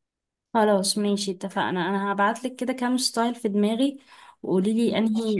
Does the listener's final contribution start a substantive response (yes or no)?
no